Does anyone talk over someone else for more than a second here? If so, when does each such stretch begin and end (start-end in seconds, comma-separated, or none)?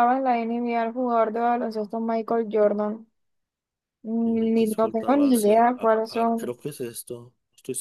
4.2-6.6